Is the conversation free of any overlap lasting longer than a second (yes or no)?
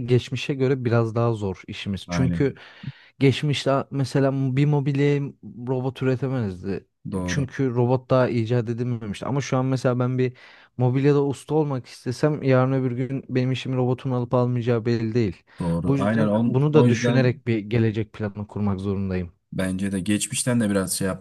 no